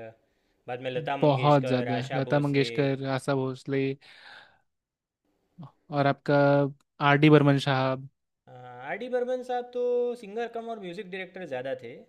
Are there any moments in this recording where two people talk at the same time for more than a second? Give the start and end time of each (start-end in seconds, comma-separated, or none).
1.2-2.7